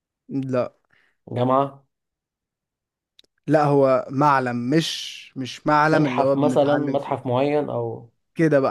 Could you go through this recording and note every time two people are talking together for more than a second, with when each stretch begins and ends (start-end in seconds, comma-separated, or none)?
5.9-7.2